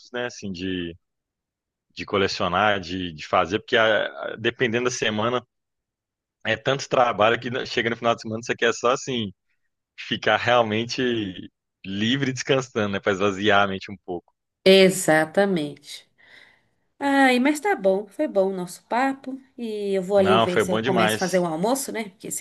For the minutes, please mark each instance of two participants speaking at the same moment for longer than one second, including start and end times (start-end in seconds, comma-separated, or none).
20.1-21.5